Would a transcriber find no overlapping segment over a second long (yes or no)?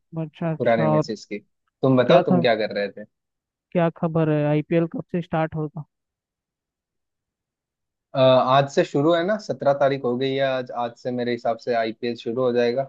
yes